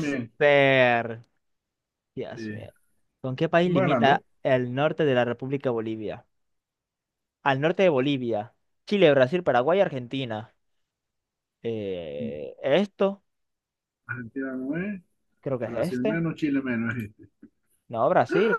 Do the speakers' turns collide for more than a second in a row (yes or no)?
no